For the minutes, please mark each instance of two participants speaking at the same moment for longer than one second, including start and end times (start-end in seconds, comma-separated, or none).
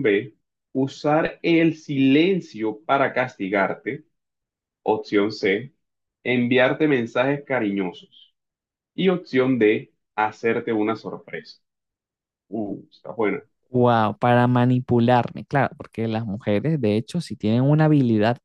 none